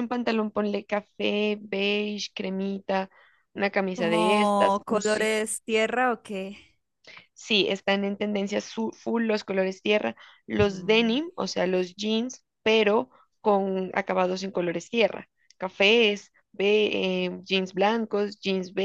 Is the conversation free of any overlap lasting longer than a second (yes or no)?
no